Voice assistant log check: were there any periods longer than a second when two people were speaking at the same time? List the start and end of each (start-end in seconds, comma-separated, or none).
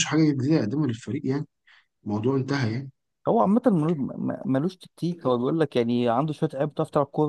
none